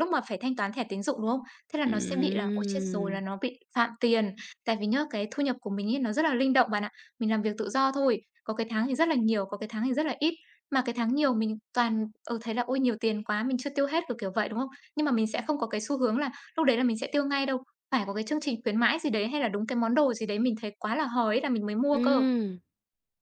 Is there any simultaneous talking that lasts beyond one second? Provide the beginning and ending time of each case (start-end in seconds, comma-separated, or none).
1.9-3.2